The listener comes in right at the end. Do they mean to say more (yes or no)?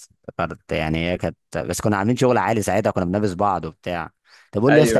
no